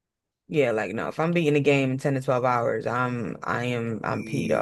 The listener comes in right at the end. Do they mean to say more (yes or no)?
yes